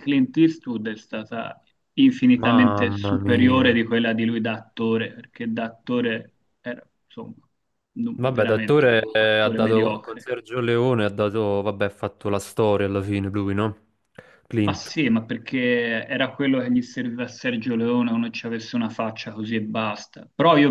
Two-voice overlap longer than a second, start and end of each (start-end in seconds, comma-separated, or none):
2.4-3.9, 8.1-10.3